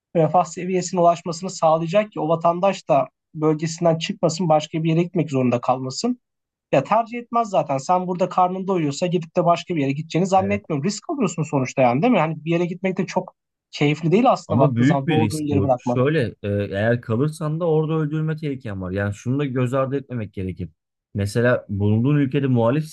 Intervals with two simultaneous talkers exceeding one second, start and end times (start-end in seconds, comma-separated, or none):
14.5-16.0